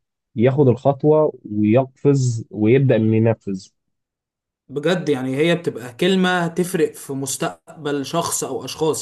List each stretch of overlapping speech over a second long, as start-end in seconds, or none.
none